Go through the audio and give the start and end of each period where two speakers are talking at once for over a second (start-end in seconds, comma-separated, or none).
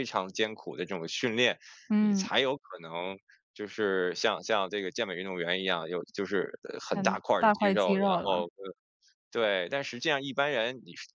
6.9-8.5